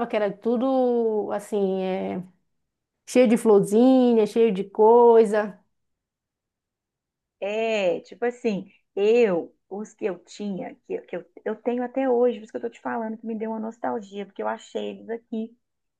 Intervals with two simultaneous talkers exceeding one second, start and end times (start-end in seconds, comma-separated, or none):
none